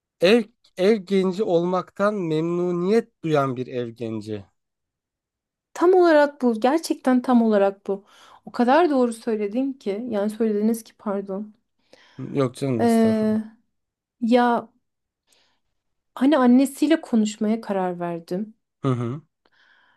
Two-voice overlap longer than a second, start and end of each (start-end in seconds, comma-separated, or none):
none